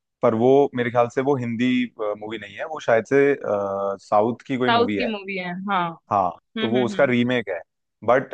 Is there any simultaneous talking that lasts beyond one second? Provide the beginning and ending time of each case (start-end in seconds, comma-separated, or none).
none